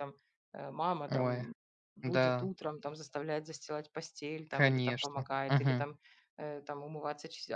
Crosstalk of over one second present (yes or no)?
yes